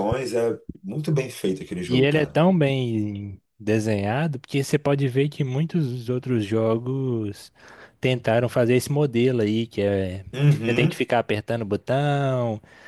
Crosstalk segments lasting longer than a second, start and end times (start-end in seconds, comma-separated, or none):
none